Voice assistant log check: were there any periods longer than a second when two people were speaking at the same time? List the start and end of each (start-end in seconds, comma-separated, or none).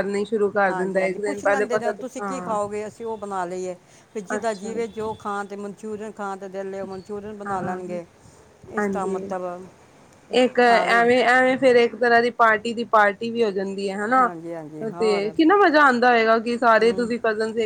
0.7-2.6